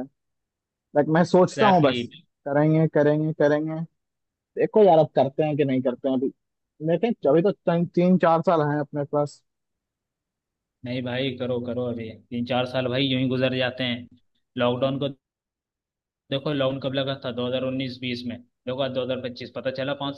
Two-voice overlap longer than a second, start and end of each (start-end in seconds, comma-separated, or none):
none